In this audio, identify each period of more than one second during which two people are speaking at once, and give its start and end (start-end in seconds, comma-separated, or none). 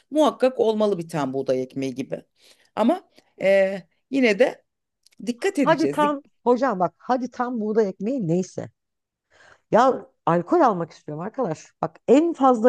none